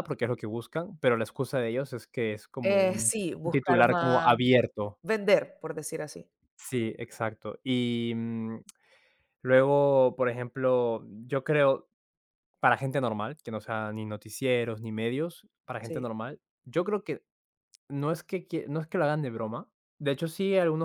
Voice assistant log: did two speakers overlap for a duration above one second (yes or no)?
yes